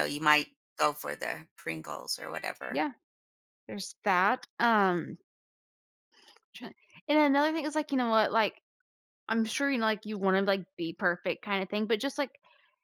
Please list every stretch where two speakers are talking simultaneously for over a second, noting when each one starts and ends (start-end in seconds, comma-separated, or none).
none